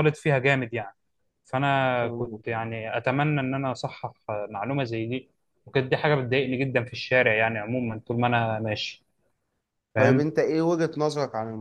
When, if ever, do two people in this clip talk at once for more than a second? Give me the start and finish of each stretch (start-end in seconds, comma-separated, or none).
none